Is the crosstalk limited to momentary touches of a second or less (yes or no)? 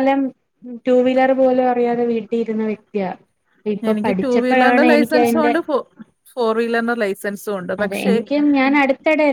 no